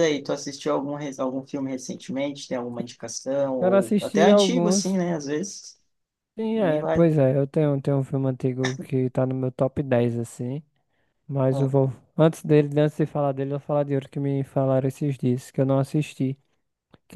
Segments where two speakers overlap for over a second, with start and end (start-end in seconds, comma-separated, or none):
3.6-5.0